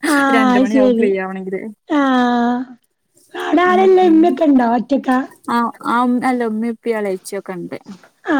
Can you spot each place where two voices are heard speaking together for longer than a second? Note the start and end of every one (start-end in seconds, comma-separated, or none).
none